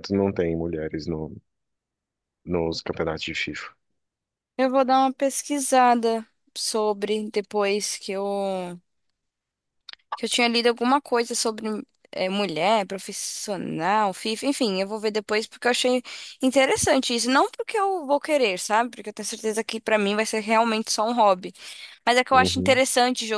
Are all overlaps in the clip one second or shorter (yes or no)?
yes